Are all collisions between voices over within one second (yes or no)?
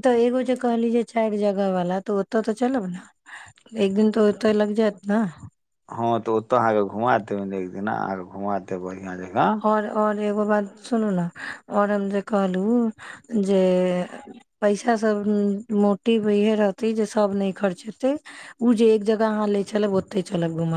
yes